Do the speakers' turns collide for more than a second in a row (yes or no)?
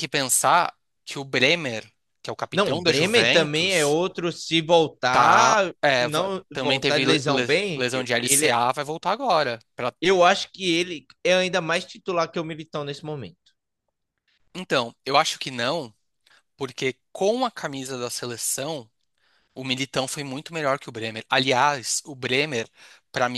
yes